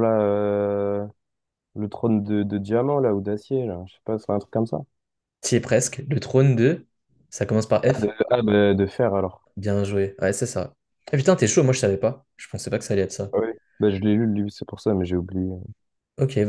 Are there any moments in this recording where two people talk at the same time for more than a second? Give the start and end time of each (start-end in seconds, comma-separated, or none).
none